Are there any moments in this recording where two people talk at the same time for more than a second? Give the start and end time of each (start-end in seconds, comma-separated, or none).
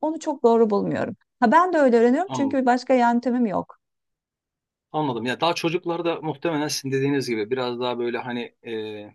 none